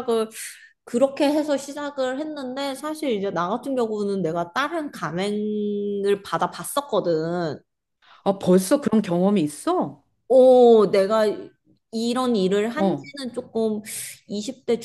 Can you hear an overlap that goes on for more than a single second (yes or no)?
no